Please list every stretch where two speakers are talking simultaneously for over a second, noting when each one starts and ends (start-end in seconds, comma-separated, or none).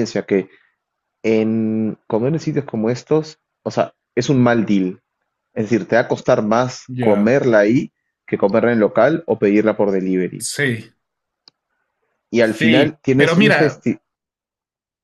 12.4-13.8